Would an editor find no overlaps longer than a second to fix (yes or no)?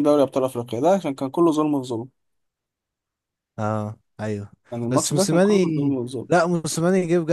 no